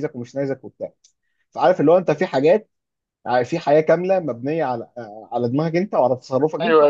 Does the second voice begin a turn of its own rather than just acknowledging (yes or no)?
yes